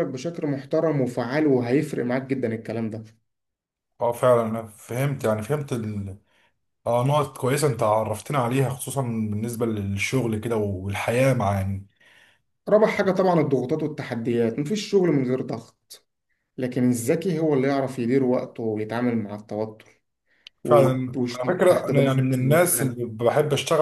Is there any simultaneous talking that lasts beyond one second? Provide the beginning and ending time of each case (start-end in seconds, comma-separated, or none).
20.6-23.0